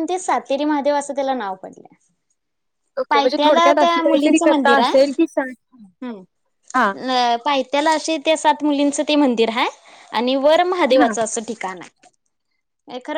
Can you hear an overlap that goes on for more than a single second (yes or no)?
yes